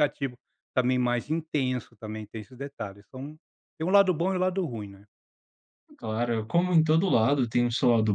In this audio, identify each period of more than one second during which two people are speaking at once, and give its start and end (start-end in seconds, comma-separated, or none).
none